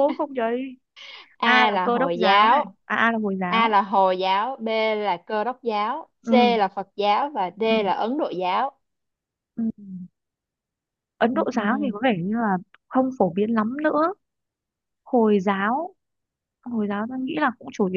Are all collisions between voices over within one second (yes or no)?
no